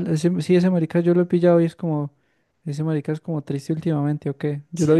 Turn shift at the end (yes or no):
no